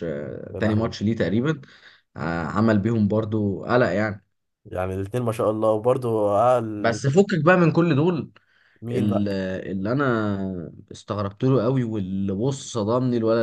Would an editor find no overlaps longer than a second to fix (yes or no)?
yes